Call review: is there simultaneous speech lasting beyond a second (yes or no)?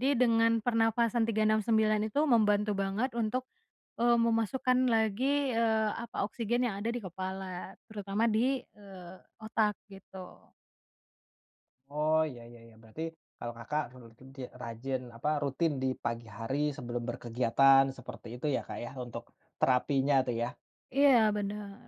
no